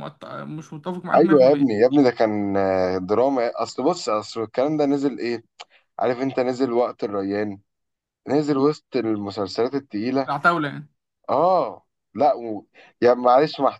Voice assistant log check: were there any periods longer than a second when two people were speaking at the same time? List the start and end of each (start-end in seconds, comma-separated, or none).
none